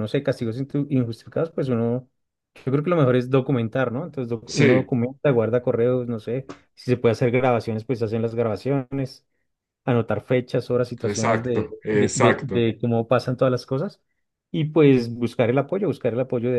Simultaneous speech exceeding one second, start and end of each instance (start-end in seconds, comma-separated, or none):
11.0-12.7